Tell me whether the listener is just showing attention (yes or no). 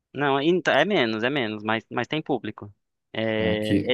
yes